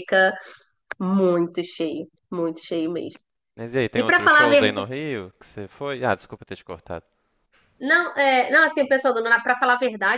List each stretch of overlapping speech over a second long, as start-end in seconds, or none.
none